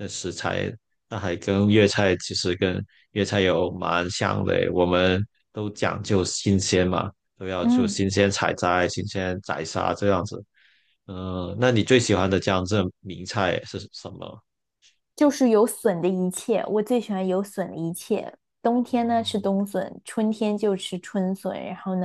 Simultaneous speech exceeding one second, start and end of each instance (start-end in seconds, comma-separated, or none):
none